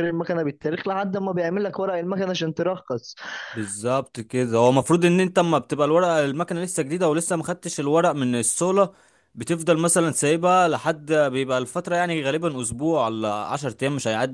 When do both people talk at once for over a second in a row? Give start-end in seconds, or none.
none